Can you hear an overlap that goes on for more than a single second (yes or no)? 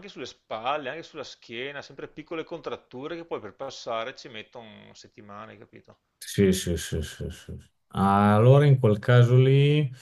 no